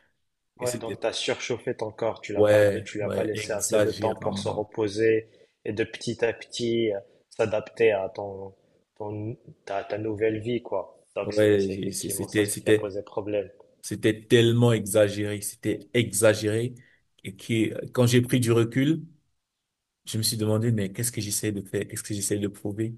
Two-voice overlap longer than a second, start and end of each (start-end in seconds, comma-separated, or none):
2.4-4.7, 11.2-13.0